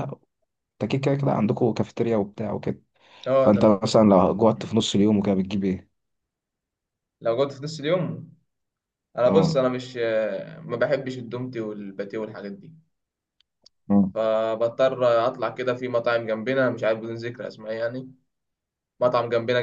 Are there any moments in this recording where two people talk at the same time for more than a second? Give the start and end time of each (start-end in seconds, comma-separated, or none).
none